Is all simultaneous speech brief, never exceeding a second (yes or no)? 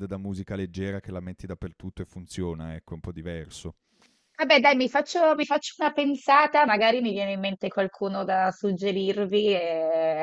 yes